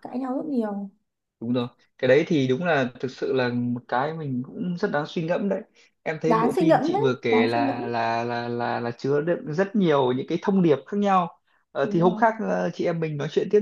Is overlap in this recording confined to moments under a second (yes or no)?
no